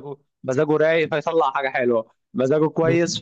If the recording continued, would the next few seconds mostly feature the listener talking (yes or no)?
no